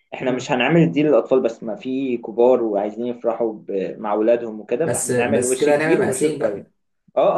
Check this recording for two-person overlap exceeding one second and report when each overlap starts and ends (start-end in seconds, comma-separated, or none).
4.8-6.6